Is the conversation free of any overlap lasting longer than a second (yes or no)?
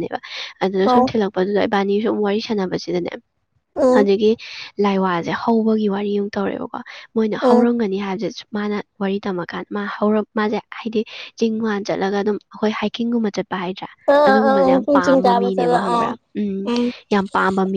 no